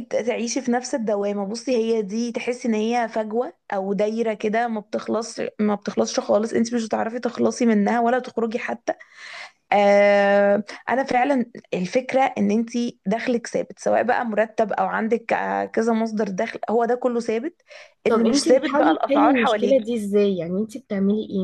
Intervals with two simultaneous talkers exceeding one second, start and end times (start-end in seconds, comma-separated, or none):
18.1-19.9